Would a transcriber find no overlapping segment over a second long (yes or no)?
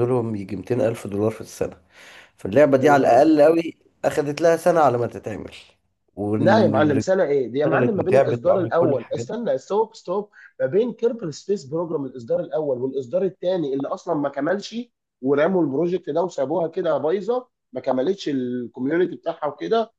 no